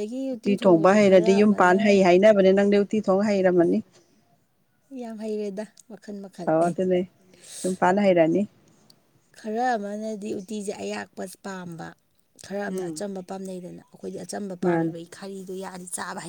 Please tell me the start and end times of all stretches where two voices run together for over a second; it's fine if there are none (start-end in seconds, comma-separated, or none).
0.6-2.0